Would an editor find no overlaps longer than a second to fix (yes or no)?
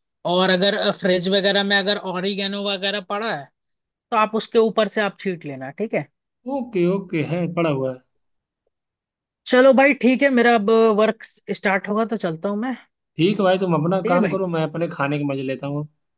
yes